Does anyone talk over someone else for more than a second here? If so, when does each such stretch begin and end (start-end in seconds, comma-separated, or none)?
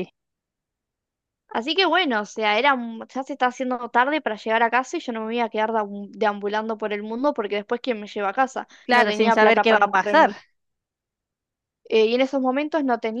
8.8-10.3